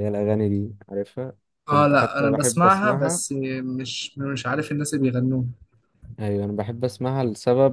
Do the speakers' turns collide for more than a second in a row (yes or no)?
yes